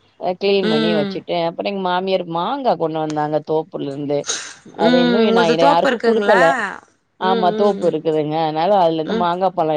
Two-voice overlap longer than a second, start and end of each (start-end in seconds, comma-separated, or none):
4.9-6.4